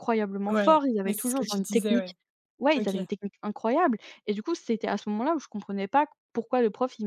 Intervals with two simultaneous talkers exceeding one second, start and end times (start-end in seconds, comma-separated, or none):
0.5-2.1